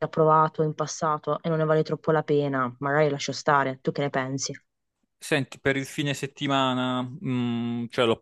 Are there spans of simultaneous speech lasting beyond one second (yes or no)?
no